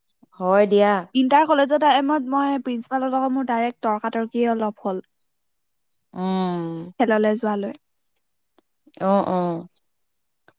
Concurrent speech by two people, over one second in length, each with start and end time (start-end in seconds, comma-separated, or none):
none